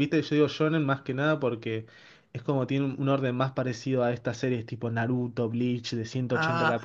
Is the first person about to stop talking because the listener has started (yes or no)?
yes